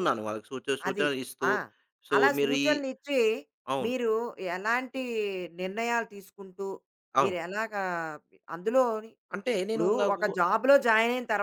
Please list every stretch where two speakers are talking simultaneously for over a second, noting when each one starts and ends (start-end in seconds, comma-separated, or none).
none